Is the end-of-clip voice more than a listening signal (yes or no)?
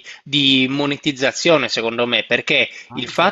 no